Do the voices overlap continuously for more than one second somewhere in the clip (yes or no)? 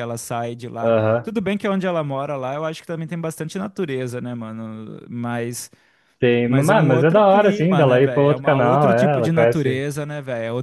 yes